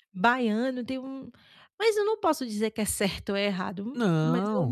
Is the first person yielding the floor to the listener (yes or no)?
no